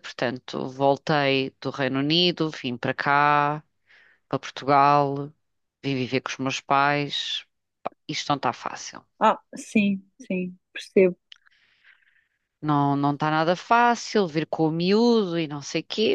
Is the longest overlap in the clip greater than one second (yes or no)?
no